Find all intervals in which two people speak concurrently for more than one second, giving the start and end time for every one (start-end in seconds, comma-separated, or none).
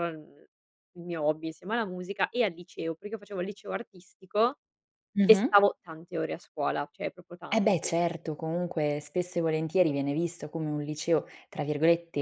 none